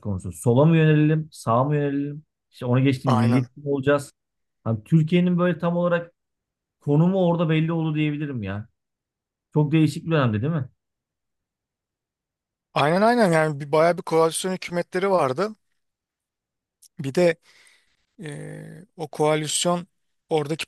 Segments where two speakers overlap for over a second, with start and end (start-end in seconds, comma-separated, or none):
none